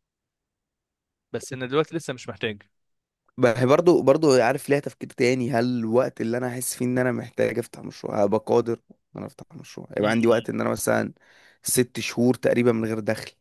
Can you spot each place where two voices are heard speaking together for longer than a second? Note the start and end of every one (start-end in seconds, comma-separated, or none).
none